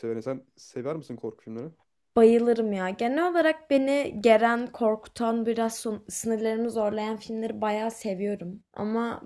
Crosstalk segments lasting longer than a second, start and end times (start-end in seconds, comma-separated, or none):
none